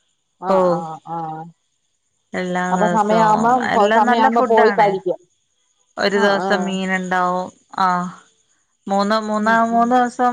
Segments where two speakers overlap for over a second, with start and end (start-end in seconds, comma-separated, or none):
2.7-4.9